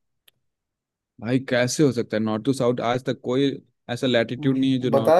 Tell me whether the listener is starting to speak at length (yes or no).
yes